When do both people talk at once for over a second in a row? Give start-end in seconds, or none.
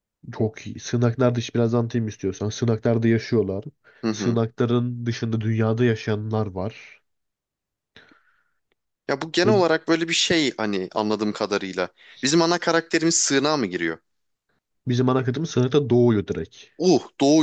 none